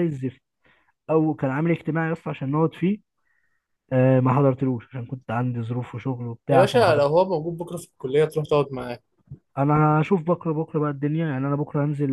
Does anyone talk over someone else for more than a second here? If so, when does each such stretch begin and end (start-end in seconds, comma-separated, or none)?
none